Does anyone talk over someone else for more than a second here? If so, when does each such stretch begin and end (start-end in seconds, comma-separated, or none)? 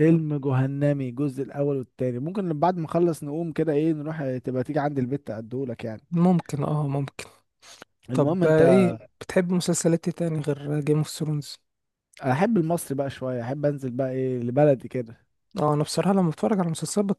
none